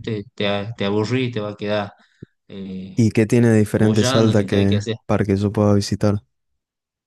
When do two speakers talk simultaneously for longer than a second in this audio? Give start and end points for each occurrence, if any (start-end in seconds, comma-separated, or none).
3.7-5.0